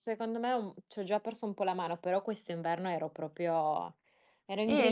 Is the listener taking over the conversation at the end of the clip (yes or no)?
yes